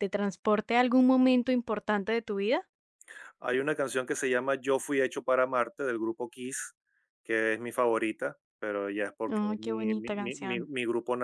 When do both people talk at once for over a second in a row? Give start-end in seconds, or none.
9.3-10.7